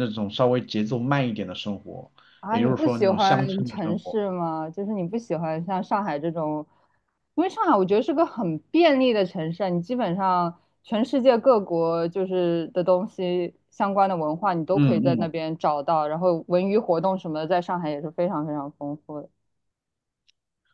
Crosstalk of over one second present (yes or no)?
yes